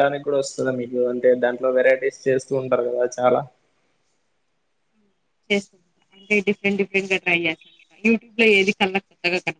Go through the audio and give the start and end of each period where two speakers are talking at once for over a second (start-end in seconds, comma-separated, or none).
none